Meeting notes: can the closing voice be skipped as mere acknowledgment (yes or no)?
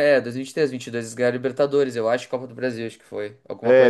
no